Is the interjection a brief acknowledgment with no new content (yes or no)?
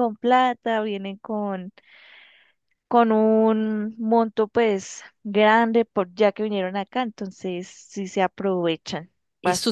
no